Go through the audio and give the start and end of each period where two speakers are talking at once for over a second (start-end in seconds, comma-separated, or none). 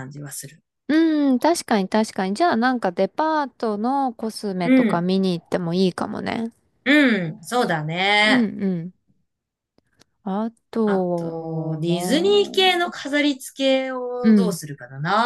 10.8-12.9